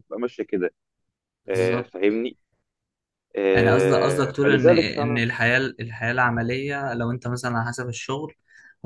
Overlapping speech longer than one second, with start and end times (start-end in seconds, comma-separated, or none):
3.5-5.2